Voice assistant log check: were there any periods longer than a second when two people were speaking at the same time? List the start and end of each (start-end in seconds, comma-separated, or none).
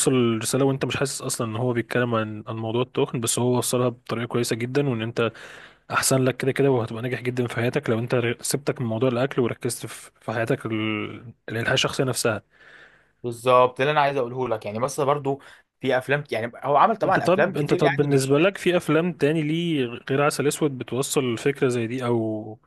17.0-18.4